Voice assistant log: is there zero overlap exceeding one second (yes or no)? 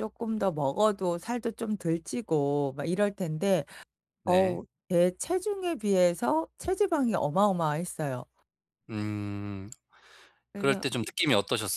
yes